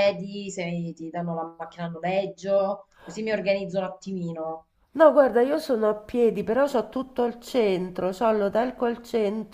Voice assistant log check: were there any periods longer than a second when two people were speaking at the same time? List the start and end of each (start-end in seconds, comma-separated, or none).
none